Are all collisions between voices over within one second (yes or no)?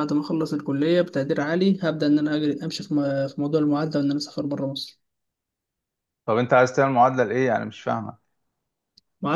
yes